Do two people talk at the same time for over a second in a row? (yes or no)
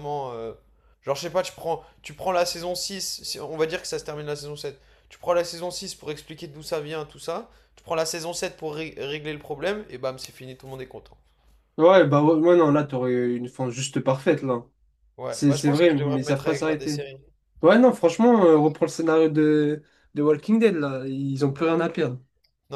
yes